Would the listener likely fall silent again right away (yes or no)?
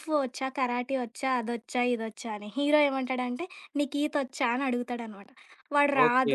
yes